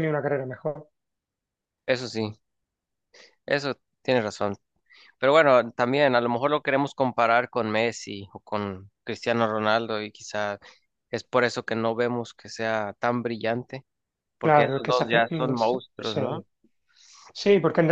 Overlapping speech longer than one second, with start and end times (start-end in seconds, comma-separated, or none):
14.4-16.4